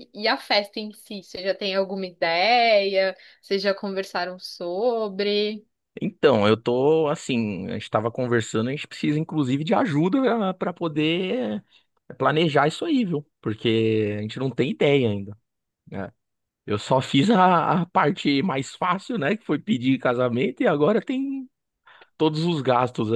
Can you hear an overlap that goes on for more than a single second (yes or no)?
no